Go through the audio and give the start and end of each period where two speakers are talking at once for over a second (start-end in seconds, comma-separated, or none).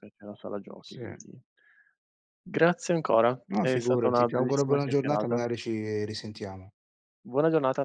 3.5-5.4